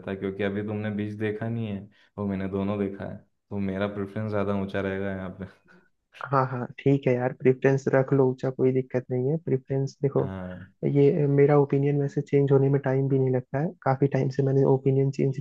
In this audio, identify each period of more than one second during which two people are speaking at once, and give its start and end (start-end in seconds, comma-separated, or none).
none